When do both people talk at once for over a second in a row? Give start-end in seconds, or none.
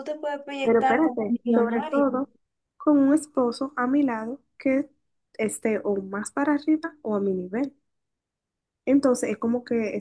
0.6-2.0